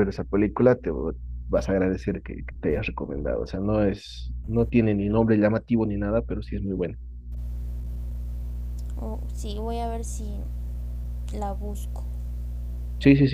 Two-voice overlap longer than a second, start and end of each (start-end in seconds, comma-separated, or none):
none